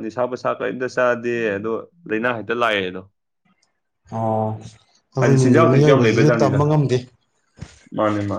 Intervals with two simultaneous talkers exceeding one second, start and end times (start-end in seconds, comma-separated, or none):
5.2-6.6